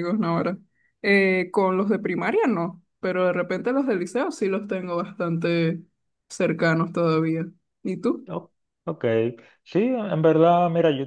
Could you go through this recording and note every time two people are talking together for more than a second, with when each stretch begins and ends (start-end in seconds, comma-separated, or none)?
none